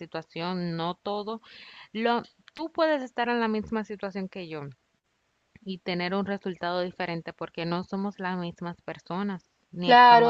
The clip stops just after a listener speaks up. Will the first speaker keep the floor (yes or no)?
no